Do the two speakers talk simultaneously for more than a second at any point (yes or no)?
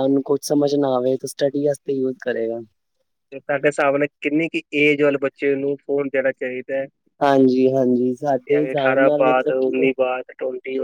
yes